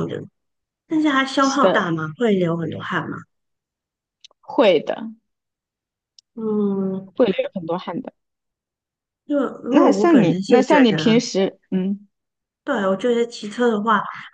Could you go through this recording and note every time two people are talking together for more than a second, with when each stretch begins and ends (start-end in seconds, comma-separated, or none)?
9.7-11.1